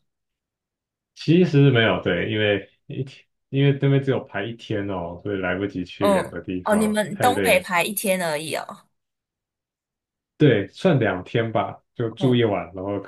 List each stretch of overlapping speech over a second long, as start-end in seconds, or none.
6.0-7.7